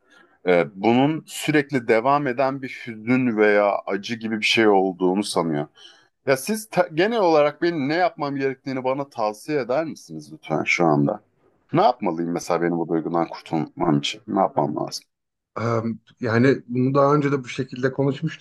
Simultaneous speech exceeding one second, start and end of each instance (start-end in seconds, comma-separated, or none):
none